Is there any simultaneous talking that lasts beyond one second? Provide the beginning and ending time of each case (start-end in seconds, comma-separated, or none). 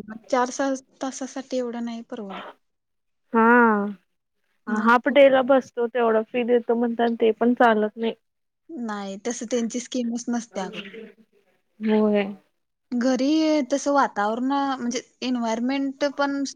none